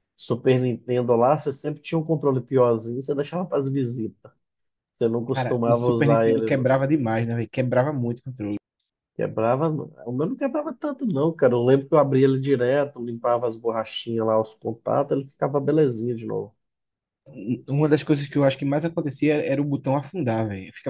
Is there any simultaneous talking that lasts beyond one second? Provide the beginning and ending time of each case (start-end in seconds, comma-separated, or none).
5.3-6.8